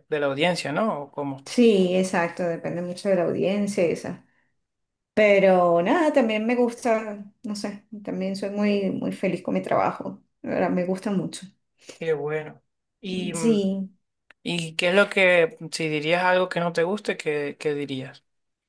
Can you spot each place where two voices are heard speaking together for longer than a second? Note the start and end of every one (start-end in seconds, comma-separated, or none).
none